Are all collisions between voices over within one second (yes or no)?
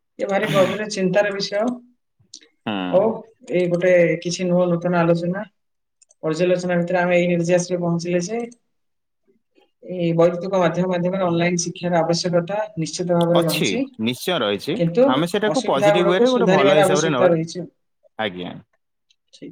no